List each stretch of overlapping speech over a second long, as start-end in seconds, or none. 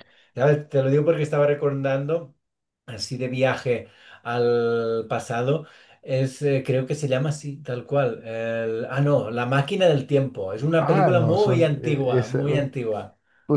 10.8-12.7